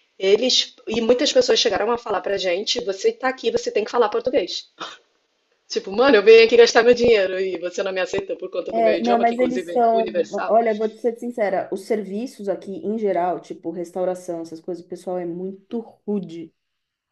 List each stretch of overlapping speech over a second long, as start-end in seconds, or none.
8.7-10.5